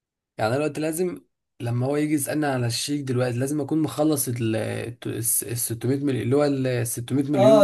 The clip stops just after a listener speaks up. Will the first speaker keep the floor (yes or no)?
no